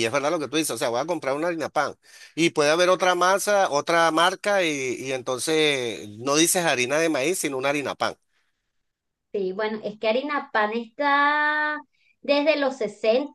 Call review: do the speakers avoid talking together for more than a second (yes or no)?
yes